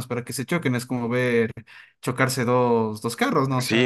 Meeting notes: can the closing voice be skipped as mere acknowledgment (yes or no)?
no